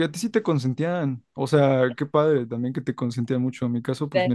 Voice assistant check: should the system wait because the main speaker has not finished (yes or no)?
yes